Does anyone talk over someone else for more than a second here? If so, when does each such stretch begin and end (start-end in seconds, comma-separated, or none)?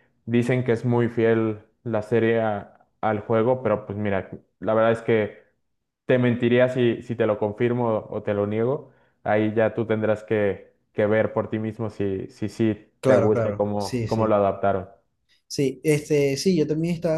13.0-14.4